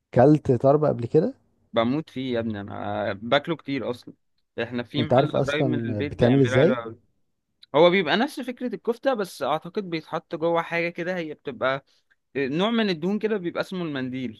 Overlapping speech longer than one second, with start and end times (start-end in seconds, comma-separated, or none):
5.0-6.8